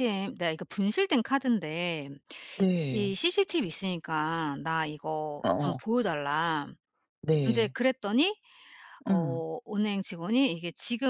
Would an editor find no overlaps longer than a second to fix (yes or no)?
yes